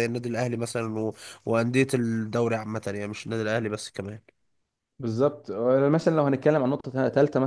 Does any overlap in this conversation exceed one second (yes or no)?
no